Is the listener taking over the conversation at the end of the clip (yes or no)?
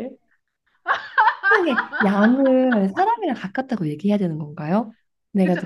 yes